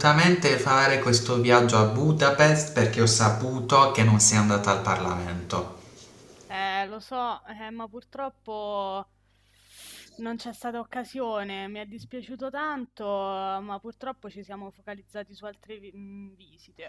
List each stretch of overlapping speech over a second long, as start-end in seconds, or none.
none